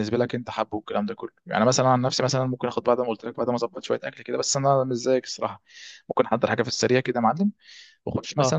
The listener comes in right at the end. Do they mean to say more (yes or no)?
no